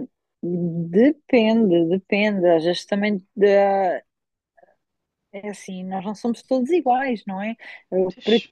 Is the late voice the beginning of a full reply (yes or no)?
no